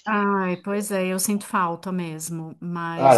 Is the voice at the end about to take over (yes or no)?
no